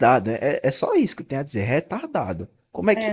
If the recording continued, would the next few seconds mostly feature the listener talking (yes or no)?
yes